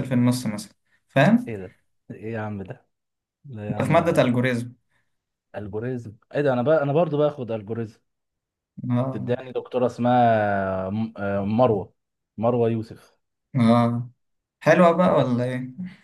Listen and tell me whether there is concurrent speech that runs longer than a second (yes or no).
no